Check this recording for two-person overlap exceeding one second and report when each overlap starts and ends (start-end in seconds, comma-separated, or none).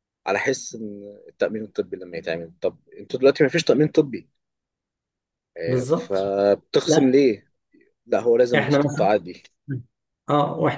none